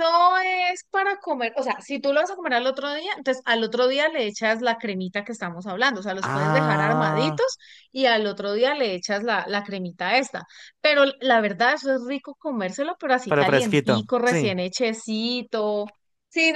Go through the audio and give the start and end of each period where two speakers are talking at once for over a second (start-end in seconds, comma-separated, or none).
6.2-7.5, 13.3-14.5